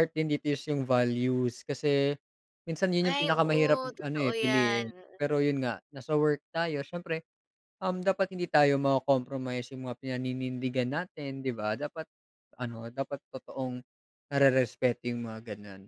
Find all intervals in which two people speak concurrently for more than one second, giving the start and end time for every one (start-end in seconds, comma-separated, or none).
3.1-4.9